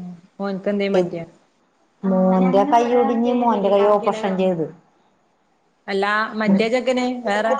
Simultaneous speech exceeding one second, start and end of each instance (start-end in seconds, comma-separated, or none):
none